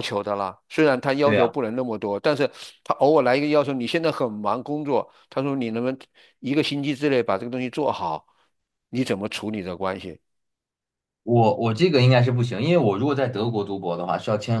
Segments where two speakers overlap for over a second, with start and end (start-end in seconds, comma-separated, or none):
none